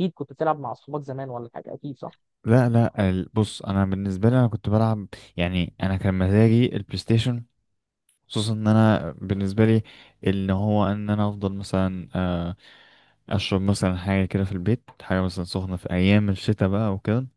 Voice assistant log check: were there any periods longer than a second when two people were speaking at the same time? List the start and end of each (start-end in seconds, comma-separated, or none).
none